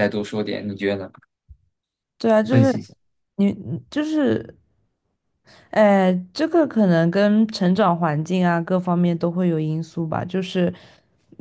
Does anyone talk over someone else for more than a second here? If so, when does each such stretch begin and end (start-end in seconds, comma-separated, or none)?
none